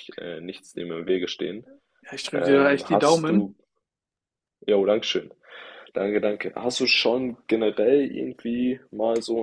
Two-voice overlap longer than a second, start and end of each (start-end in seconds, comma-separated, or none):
2.3-3.5